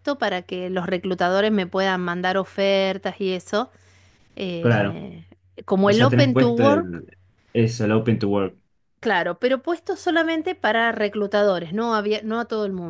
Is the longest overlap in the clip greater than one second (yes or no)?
yes